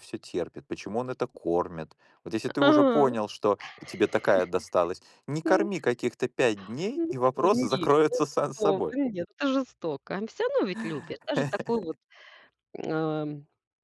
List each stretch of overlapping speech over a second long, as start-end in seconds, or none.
7.0-8.9